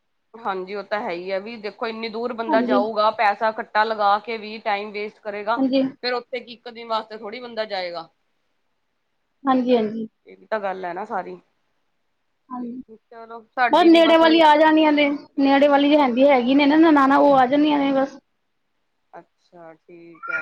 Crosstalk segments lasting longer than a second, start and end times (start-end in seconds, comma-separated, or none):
none